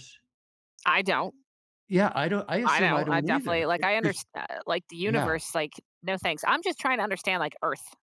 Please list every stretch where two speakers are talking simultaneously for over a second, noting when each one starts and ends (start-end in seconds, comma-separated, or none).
2.6-4.2